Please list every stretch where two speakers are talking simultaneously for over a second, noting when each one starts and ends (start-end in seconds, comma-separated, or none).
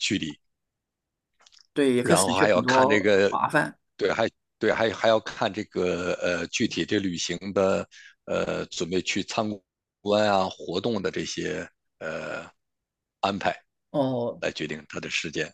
2.0-3.4